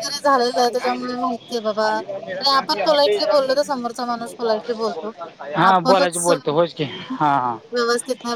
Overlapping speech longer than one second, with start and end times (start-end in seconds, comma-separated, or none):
5.7-7.5